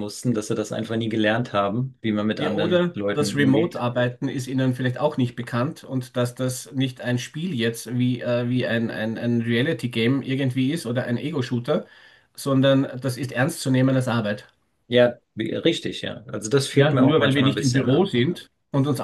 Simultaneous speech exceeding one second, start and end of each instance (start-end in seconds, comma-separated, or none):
2.4-3.9, 16.7-18.1